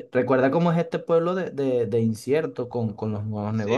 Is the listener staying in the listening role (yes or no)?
no